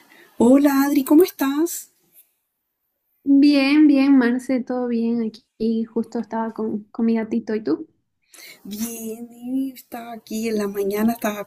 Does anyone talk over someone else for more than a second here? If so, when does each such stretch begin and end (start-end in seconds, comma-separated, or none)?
none